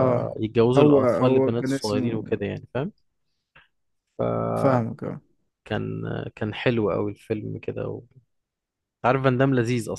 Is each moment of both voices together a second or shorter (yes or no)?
no